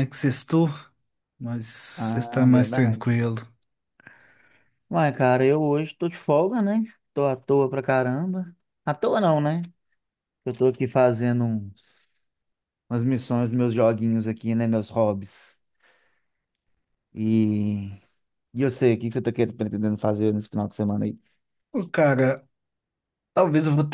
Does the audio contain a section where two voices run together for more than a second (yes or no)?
yes